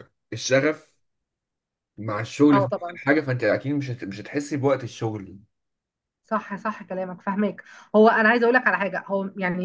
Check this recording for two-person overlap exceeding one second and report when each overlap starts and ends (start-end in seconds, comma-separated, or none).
none